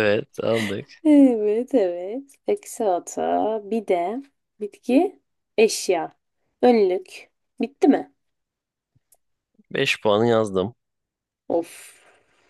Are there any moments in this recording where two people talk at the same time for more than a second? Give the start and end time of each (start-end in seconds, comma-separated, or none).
none